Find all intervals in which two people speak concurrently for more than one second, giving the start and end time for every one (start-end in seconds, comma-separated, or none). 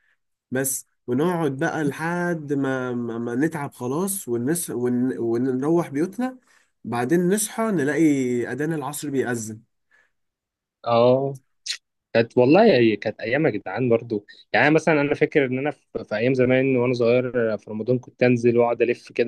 none